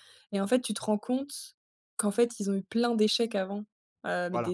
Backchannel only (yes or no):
yes